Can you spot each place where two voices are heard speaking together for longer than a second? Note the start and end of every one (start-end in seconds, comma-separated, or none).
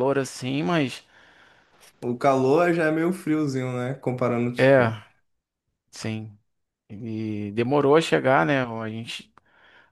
none